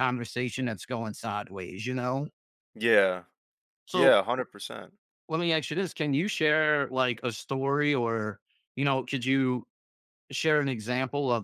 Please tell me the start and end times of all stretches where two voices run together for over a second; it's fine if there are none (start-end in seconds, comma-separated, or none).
none